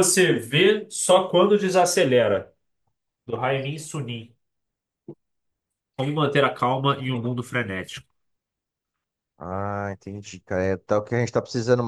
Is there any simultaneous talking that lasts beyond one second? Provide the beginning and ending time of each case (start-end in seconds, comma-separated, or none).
none